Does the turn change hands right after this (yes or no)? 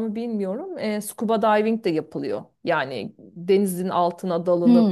yes